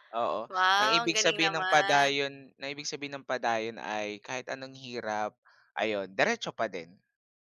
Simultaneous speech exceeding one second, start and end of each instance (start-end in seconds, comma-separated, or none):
0.8-2.1